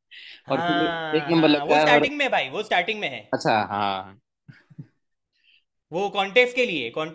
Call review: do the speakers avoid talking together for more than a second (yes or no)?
no